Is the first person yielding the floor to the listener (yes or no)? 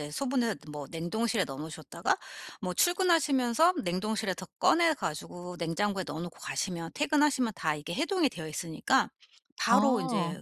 no